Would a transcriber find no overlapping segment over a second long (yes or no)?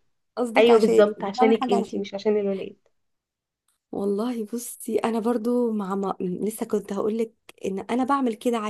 no